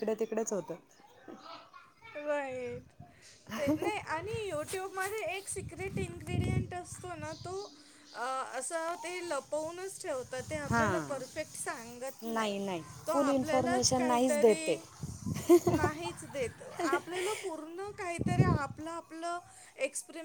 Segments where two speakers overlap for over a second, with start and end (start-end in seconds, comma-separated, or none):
13.1-14.6